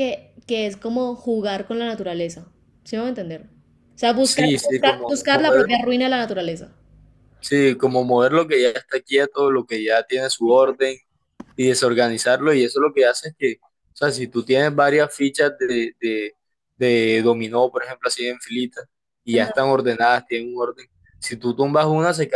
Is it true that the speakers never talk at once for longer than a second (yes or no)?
no